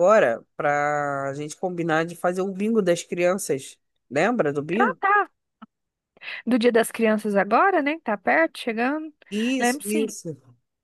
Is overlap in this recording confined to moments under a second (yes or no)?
yes